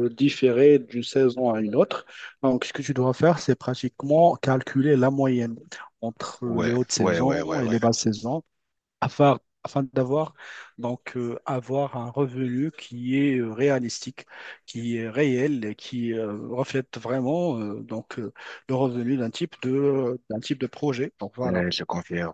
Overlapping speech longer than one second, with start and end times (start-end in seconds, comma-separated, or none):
6.4-7.8